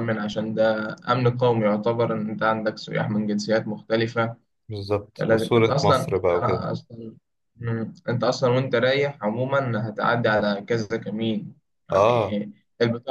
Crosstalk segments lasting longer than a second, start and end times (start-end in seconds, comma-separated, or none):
5.2-6.7